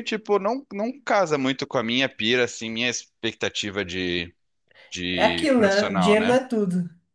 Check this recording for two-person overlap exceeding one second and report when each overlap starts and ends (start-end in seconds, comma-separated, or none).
5.1-6.4